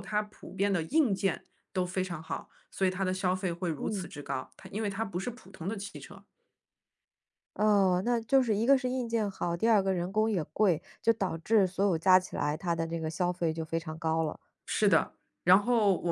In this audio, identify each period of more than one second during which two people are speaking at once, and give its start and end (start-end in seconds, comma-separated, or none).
none